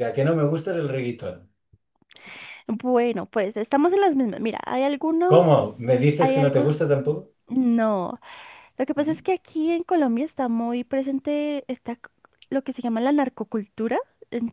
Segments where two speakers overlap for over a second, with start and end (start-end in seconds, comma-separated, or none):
5.3-6.7